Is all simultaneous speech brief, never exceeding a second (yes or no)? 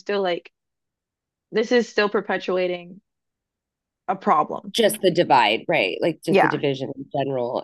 yes